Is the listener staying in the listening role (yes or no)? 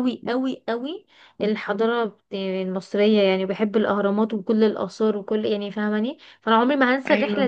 yes